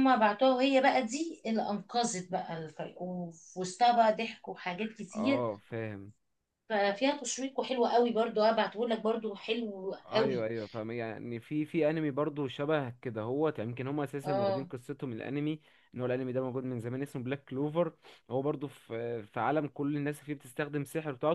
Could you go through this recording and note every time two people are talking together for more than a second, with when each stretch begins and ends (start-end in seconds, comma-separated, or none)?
none